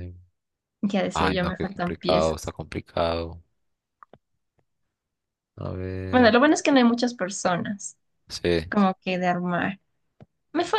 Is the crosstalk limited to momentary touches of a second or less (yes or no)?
no